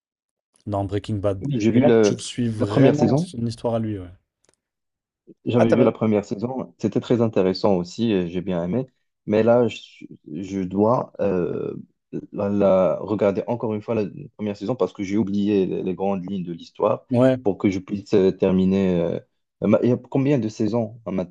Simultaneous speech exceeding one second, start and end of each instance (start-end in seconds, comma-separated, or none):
1.4-3.3